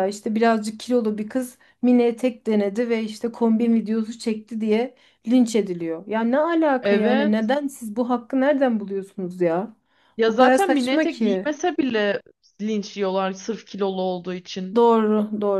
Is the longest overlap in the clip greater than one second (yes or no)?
yes